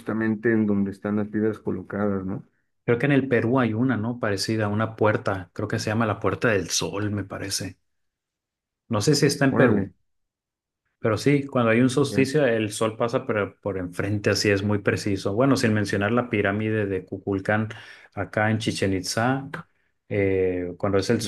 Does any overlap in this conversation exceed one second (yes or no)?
no